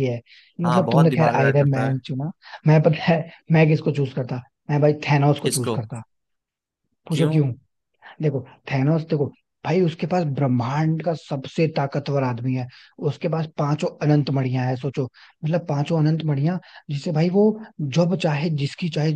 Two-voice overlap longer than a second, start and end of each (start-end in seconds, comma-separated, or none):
0.7-2.0